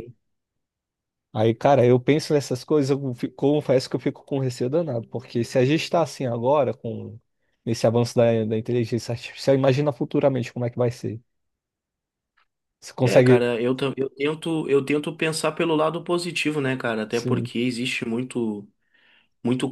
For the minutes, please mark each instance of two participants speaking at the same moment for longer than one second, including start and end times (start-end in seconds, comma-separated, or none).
none